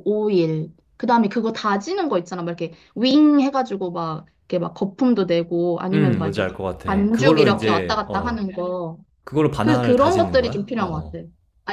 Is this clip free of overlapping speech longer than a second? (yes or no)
no